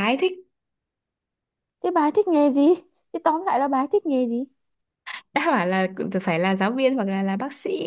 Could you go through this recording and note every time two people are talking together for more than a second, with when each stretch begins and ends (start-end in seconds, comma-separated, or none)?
none